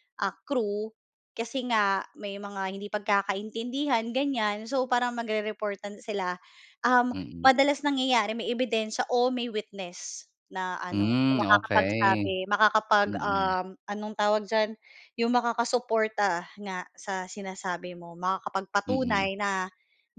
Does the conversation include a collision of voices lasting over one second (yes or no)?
yes